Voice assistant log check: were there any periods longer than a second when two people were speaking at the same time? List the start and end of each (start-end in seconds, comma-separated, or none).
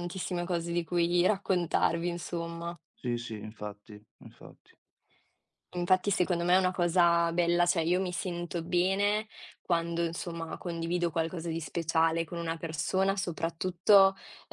none